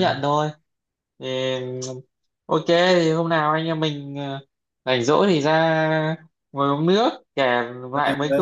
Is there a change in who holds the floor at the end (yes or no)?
no